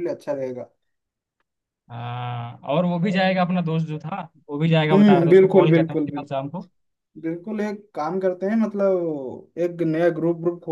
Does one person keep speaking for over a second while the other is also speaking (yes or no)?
yes